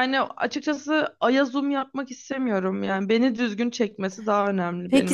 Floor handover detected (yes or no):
yes